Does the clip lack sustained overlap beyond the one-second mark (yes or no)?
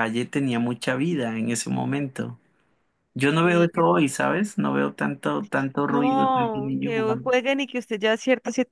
no